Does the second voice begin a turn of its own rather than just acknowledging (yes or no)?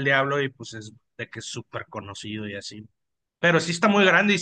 no